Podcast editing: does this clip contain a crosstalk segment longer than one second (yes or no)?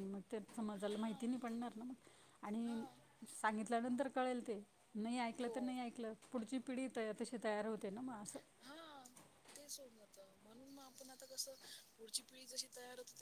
no